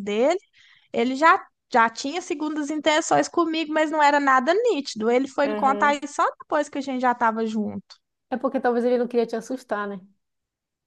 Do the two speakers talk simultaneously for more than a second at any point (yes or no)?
no